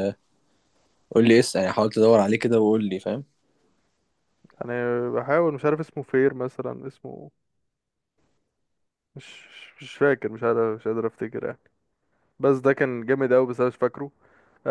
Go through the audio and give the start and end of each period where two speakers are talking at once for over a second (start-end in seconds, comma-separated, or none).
none